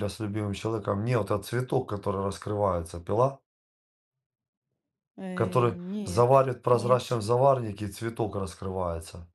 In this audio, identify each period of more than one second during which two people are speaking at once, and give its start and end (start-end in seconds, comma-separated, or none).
5.3-7.0